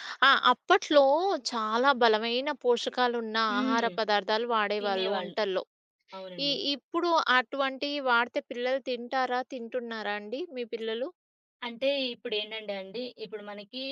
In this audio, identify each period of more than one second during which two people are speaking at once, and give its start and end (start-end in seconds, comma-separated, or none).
none